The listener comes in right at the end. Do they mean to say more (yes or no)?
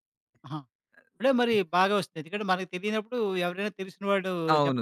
yes